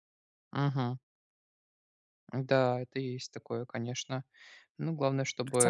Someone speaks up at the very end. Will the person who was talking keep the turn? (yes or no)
no